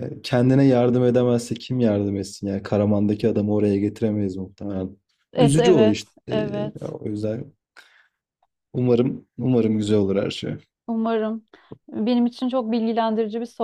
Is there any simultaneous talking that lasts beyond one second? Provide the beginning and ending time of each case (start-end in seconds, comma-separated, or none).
5.4-6.9